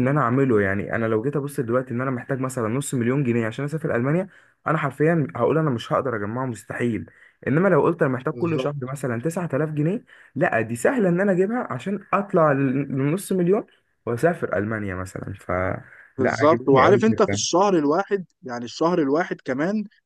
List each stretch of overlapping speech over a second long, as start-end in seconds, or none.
16.2-17.4